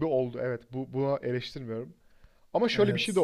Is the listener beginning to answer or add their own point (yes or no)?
no